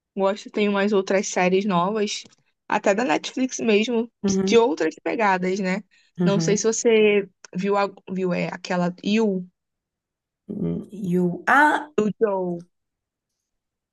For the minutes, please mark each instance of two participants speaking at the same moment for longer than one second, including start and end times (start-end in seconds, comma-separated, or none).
none